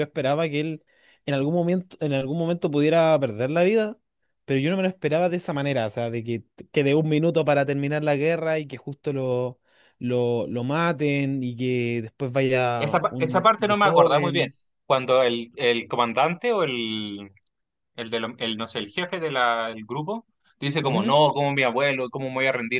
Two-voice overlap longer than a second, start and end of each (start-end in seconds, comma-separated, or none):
12.8-14.5